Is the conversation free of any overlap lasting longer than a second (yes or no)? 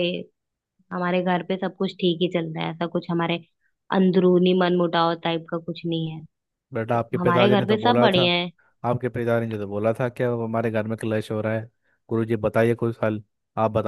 no